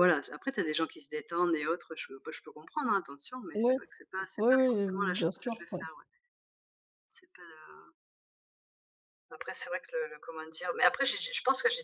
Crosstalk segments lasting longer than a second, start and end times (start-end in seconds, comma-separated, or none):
4.4-5.9